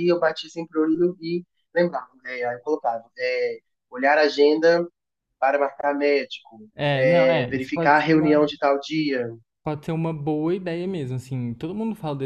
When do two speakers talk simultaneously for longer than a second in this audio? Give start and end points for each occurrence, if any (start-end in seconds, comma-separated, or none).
6.8-8.5